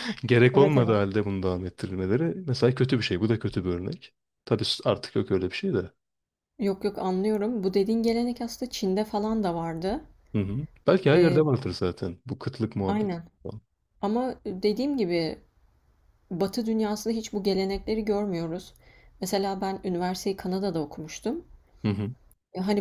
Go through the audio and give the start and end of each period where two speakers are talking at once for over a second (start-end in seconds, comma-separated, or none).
none